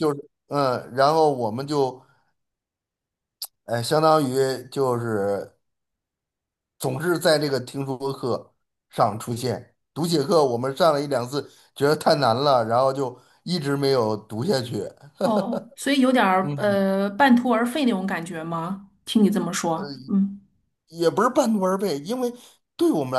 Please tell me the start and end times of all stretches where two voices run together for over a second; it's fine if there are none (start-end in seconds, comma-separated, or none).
none